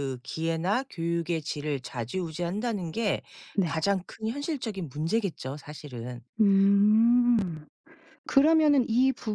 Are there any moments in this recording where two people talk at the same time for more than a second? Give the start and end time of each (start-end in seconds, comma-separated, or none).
none